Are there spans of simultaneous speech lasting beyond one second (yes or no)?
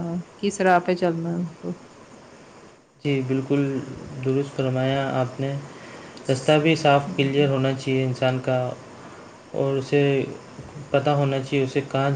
no